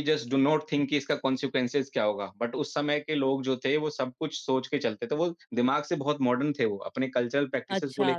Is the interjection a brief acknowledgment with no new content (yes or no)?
no